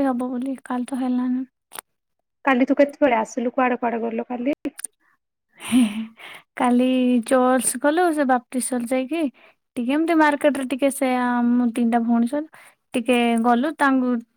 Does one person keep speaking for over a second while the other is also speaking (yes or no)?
no